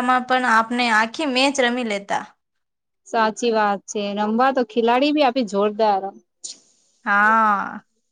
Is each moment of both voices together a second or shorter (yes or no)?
yes